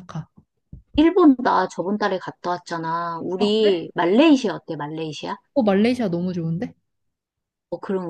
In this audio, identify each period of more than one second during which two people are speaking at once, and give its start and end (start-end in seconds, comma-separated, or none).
none